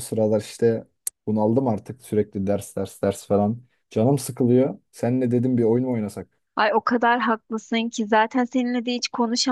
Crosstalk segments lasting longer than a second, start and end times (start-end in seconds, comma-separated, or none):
none